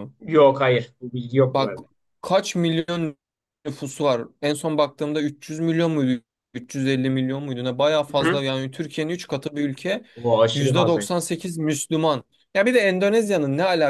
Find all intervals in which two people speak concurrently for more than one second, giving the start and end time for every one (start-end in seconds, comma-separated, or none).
none